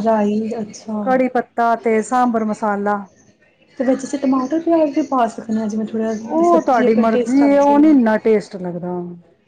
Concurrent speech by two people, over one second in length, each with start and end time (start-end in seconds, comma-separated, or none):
6.2-7.9